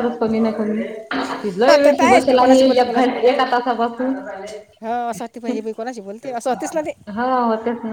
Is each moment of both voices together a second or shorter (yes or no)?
no